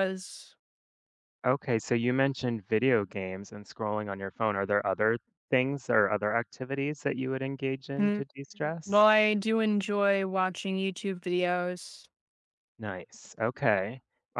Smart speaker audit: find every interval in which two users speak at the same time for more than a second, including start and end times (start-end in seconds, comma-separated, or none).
none